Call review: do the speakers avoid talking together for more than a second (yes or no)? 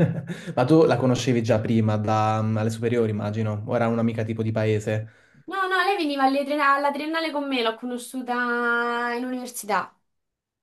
yes